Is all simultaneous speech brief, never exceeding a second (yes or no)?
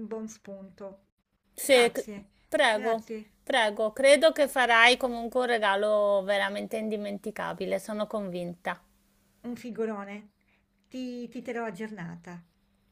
yes